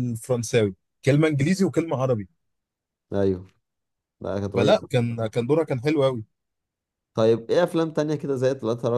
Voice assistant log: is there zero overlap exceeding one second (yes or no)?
yes